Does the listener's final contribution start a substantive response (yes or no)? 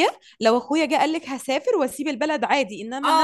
yes